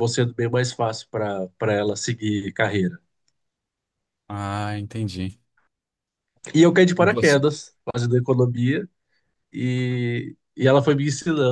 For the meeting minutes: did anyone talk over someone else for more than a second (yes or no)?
no